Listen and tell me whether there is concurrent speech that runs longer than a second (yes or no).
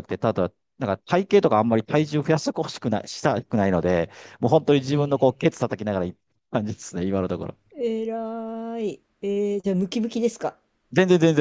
no